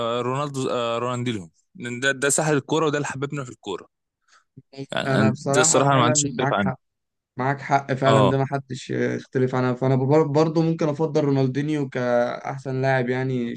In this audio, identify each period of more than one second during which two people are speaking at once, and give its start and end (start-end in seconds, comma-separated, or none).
5.1-6.7